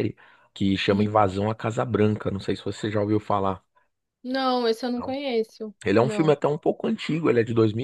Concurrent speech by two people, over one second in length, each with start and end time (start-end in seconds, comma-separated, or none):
none